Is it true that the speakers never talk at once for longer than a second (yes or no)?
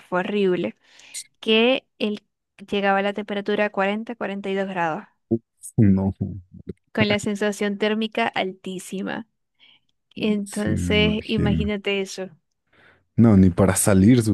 no